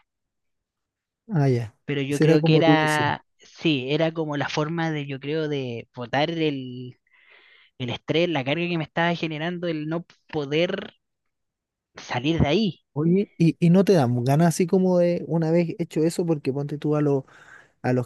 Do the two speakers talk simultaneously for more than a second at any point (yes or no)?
yes